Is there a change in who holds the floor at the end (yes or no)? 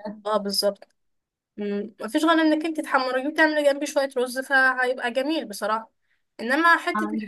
no